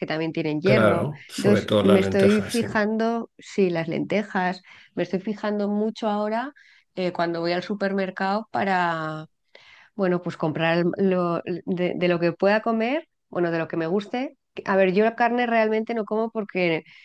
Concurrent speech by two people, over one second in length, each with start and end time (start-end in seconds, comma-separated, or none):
0.6-2.7